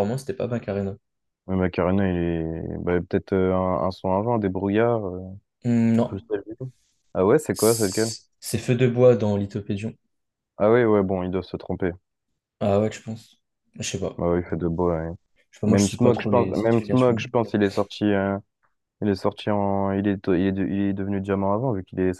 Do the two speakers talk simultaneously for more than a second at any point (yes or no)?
yes